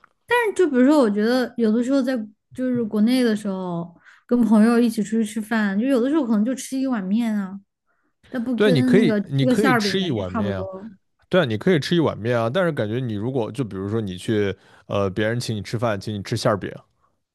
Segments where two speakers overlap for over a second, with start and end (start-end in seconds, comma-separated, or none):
8.6-10.7